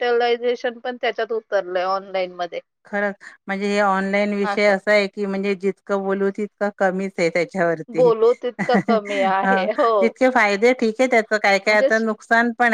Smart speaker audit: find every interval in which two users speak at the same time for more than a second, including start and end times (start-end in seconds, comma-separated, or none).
none